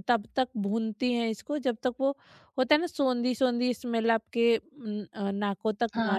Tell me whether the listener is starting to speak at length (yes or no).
yes